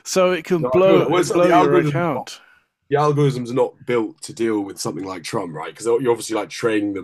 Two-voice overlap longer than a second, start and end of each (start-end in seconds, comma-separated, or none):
0.6-2.3